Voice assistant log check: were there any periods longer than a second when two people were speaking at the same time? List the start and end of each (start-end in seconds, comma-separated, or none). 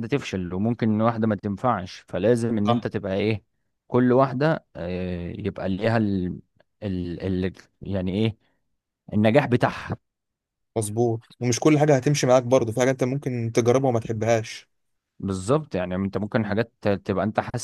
none